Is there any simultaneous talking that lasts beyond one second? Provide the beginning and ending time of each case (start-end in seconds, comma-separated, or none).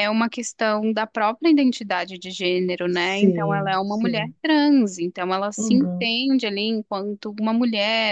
2.9-4.3